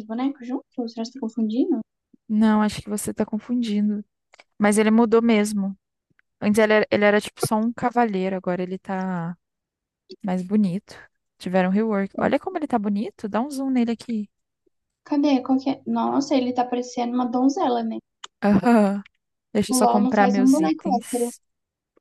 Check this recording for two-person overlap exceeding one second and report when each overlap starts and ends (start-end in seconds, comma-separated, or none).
19.7-21.3